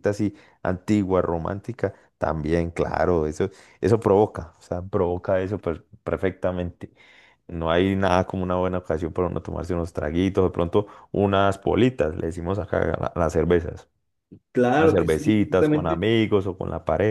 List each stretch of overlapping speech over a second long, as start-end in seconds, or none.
14.8-16.0